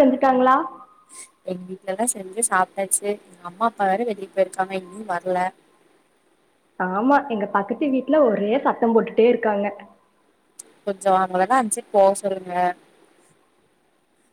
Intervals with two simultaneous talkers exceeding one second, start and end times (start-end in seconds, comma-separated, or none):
none